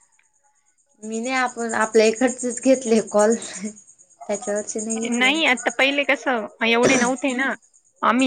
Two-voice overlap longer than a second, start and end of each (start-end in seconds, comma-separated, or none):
none